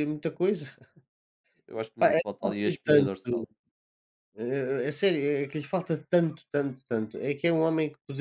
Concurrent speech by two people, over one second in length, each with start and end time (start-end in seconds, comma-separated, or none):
2.0-3.4